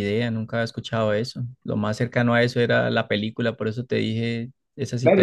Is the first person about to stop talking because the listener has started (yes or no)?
yes